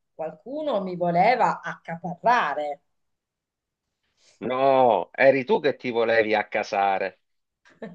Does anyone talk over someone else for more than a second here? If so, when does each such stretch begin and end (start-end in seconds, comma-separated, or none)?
none